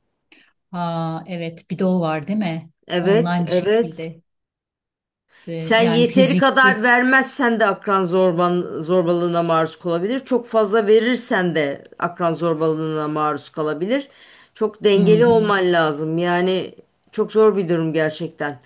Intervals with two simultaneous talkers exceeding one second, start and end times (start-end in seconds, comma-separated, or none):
2.9-4.1, 5.5-6.9